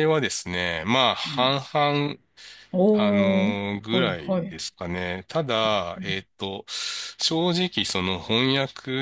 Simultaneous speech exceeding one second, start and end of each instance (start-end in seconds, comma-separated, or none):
2.9-4.6